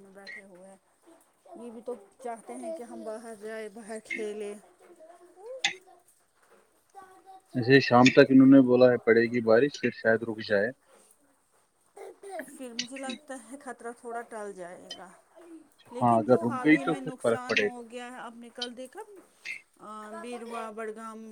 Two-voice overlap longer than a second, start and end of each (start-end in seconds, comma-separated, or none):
16.0-17.8